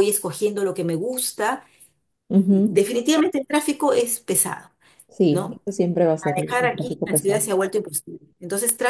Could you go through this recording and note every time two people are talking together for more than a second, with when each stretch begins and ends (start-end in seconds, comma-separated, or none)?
6.2-7.5